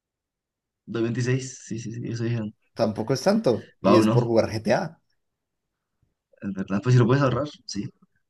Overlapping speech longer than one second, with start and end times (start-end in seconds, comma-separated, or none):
none